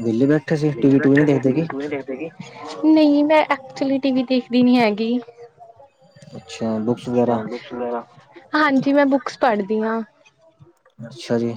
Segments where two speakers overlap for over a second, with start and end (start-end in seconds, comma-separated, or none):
none